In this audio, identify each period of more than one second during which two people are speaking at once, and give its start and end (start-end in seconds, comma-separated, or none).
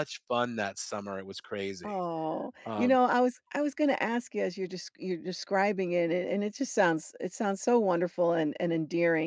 none